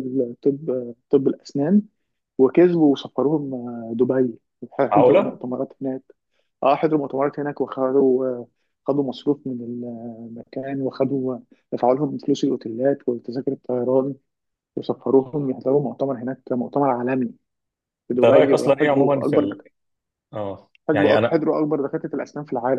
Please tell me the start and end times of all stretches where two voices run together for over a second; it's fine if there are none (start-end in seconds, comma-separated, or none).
18.1-19.6